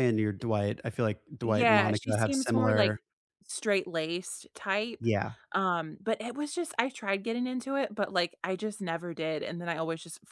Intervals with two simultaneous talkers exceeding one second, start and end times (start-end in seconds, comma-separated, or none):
1.4-3.0